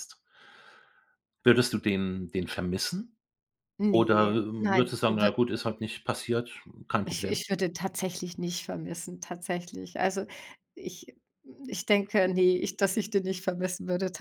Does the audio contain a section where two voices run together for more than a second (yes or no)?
yes